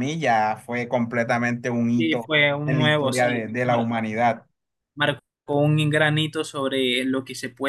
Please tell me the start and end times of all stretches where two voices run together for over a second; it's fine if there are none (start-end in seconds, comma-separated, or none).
2.0-3.5